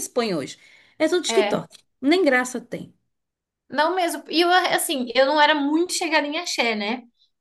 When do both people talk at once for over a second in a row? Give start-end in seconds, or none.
none